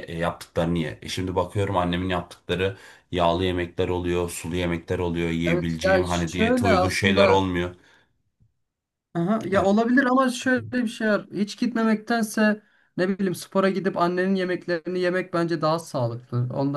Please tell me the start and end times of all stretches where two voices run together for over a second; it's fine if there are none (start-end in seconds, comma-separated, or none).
5.5-7.4